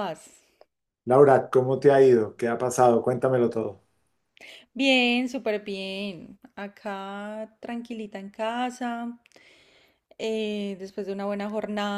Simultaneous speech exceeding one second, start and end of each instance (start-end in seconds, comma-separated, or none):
none